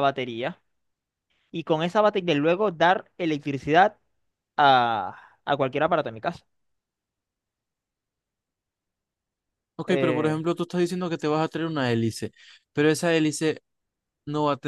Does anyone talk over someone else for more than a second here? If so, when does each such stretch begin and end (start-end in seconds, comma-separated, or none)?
none